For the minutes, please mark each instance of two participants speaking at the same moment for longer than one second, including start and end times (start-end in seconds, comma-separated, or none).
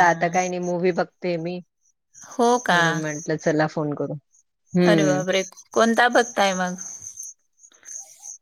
none